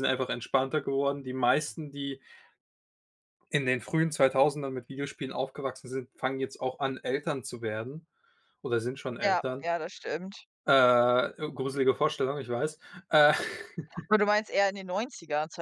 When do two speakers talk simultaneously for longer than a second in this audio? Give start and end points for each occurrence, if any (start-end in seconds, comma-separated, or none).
none